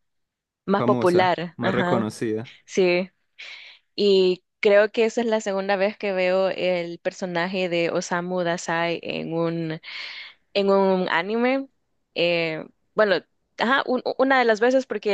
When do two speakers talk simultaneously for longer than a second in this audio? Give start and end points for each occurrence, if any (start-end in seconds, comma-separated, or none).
0.8-2.1